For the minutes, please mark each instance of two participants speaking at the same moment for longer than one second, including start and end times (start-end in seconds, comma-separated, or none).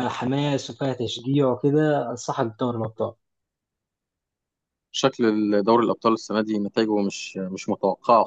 none